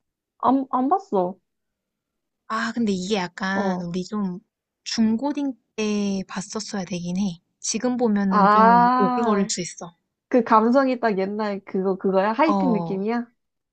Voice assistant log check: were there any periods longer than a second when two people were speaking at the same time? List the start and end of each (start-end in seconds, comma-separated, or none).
8.3-9.5